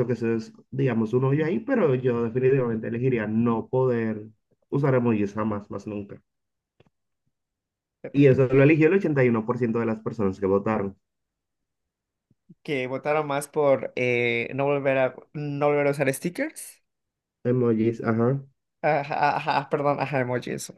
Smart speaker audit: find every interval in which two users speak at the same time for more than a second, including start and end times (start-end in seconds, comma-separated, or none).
none